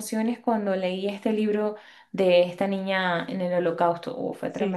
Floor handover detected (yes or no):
yes